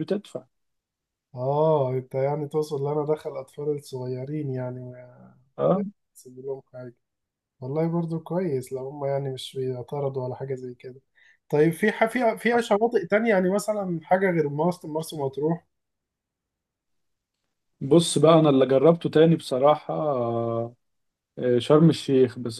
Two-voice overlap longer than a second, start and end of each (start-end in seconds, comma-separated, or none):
none